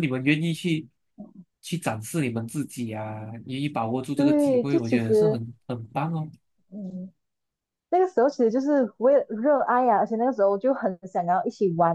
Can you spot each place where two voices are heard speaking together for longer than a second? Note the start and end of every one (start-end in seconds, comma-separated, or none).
4.1-5.4